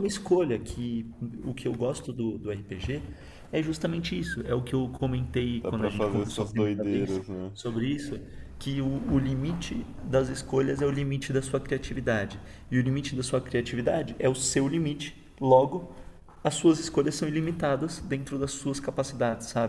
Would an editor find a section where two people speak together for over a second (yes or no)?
yes